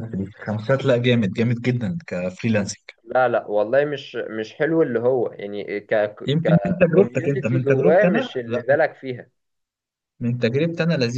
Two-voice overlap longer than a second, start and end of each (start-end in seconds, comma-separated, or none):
6.4-8.6